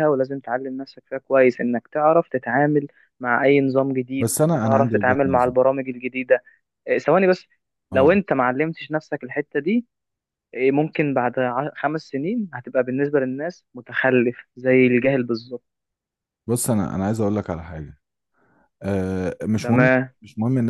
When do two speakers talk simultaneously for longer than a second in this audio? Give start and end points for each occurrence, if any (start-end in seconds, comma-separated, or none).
4.2-5.5